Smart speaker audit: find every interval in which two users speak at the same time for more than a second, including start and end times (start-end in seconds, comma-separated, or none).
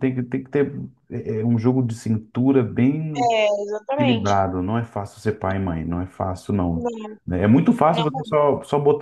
none